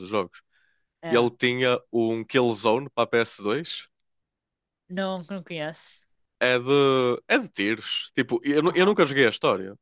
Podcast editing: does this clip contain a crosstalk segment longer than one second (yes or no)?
no